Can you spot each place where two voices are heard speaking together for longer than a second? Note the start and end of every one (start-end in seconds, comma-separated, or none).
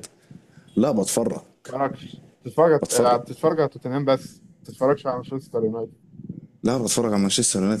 none